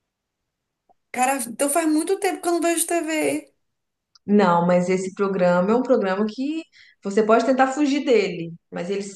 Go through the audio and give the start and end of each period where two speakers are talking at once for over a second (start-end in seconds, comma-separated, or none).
none